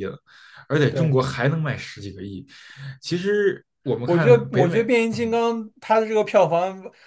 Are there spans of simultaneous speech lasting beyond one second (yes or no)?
yes